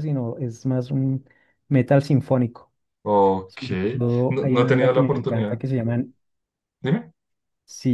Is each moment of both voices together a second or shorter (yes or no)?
no